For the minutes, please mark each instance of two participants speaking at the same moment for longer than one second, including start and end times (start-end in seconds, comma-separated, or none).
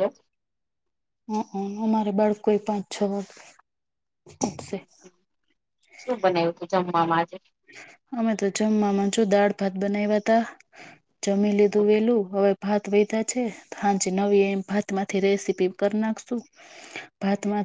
none